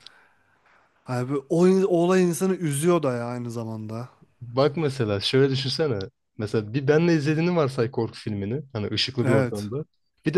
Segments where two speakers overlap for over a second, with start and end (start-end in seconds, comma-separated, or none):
none